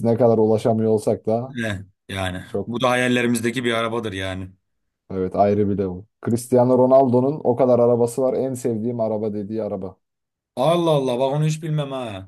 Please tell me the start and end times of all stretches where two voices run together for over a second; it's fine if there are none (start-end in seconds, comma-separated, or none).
none